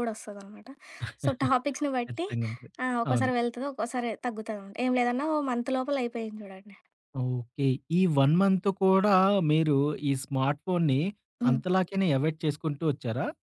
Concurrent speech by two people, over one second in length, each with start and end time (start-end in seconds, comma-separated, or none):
none